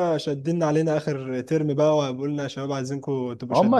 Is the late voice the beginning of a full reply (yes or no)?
yes